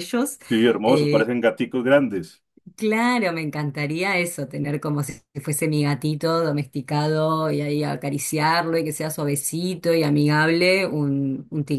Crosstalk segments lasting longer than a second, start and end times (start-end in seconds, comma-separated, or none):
none